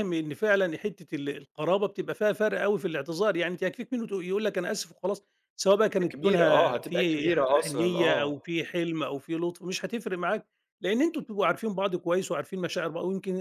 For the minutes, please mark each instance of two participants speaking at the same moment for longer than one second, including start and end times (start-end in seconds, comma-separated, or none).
6.0-8.3